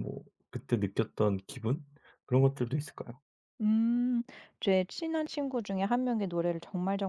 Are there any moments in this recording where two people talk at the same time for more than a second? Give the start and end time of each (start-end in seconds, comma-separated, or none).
none